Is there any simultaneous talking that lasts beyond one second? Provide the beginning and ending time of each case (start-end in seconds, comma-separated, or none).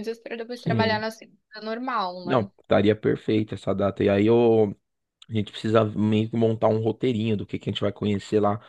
none